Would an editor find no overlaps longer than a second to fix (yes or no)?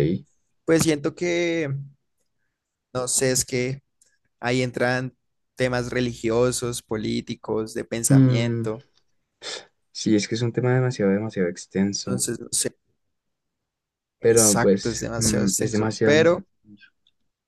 no